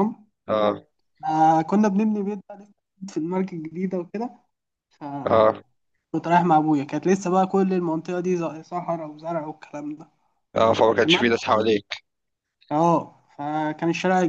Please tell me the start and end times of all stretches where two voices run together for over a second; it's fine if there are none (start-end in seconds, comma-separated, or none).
none